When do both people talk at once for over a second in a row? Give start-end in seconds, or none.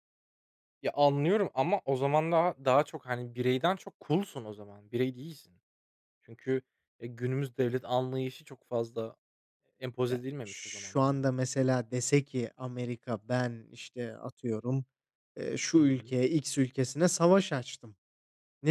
10.1-11.4